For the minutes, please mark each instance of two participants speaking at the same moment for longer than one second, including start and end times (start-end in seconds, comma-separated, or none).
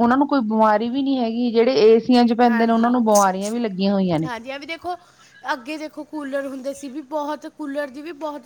none